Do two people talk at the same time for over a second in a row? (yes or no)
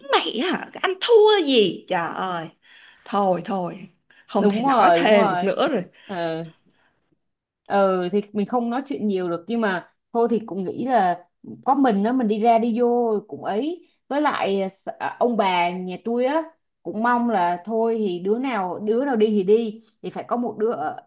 yes